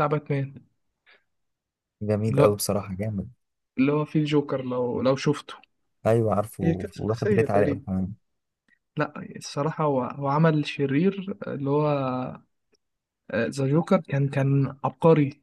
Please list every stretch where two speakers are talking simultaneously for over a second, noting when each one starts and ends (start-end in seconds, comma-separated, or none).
6.6-7.8